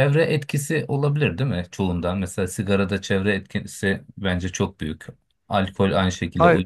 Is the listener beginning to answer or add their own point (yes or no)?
no